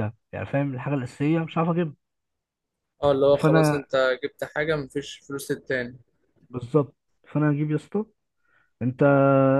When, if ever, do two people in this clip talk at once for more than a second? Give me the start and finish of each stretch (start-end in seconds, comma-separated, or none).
none